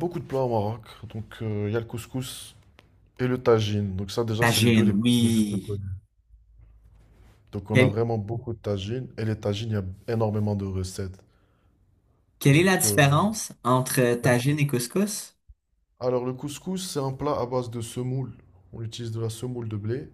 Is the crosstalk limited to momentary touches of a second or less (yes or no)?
no